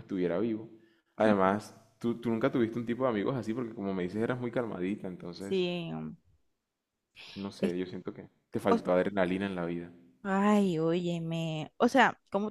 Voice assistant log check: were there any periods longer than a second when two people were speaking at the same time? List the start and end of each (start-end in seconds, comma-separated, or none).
none